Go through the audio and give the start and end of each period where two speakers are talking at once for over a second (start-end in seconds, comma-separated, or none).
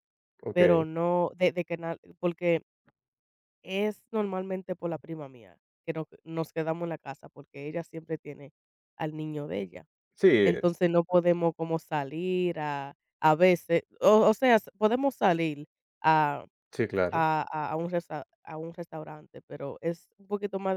none